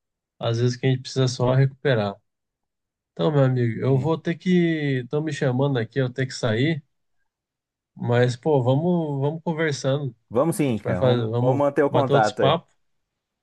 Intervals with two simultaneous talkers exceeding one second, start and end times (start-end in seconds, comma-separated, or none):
10.7-12.6